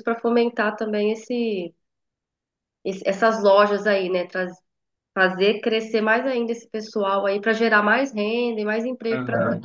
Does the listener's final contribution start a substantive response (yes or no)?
yes